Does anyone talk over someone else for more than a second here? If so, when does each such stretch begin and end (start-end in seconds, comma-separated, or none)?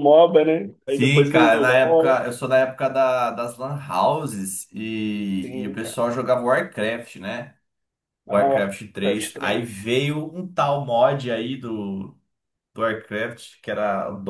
0.9-2.2, 8.3-9.8